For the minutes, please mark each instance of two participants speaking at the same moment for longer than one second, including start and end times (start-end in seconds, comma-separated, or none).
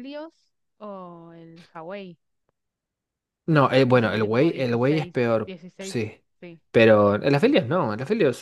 3.9-6.0